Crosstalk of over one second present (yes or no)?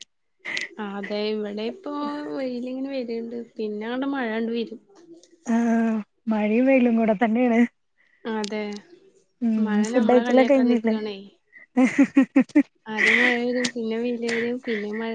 yes